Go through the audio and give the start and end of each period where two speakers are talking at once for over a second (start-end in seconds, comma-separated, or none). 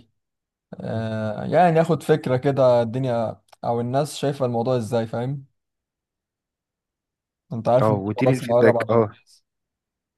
7.8-9.2